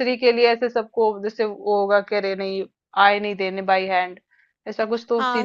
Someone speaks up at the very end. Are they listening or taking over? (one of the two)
taking over